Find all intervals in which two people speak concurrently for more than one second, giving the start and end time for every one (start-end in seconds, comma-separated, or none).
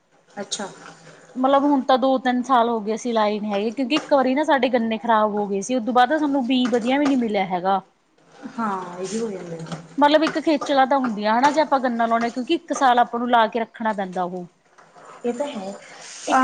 none